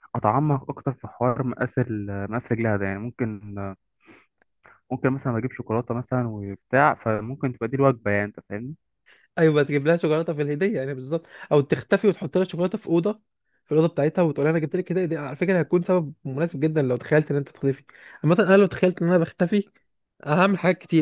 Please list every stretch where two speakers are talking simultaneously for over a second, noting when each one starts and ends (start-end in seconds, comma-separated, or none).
none